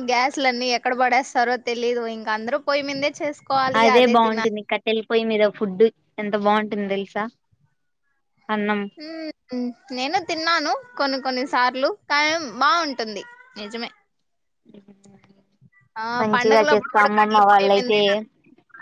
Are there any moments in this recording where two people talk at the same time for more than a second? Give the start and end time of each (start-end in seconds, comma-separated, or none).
16.2-18.0